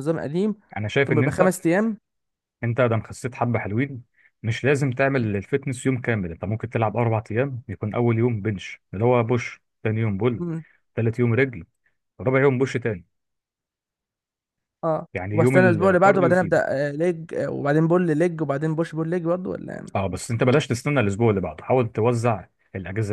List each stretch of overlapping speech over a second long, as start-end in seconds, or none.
15.1-16.6